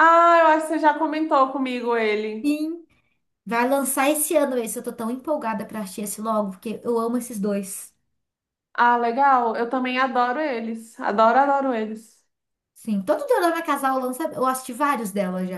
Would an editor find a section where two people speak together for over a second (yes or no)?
no